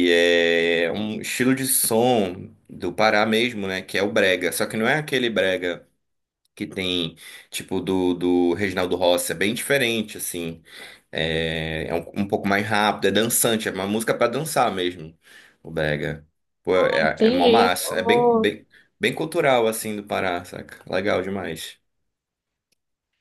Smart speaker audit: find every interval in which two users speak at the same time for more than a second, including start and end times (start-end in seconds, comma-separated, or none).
16.8-18.5